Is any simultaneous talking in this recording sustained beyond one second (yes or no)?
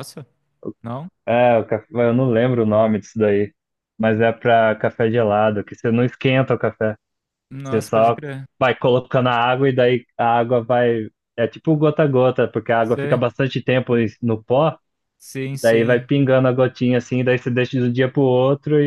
no